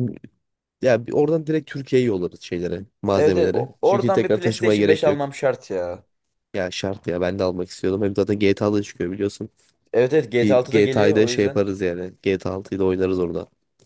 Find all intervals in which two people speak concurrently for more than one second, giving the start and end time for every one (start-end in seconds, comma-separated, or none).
3.1-5.2, 10.4-11.7